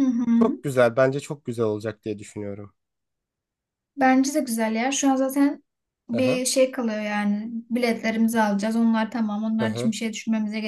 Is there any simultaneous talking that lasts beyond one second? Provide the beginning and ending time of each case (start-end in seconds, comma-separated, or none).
none